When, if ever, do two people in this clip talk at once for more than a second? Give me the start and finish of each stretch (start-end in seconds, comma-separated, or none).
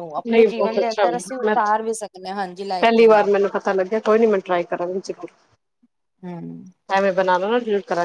1.5-3.3